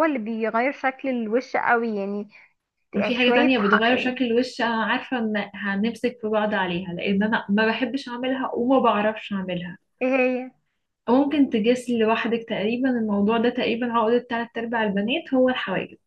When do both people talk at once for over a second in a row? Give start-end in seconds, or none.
3.0-4.2